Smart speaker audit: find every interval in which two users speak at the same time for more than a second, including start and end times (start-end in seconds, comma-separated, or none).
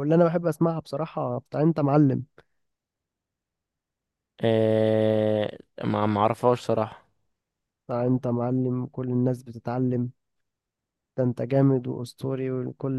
none